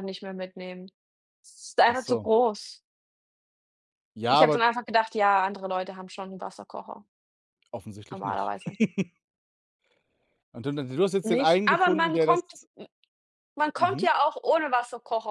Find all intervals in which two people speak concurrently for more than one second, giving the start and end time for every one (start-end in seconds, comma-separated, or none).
11.2-12.5